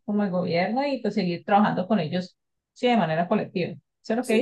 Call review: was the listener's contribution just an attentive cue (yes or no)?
no